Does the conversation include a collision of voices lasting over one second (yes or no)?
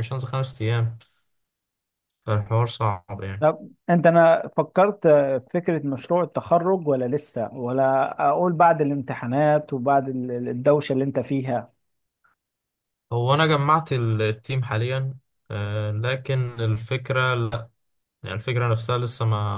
no